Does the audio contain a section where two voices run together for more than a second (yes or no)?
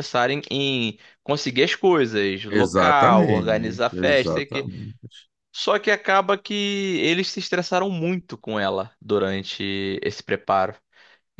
yes